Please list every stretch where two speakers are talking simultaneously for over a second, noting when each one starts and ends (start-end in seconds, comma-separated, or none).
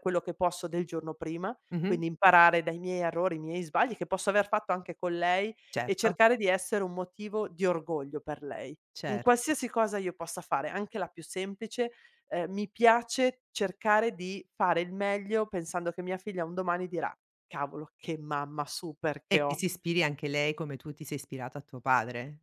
none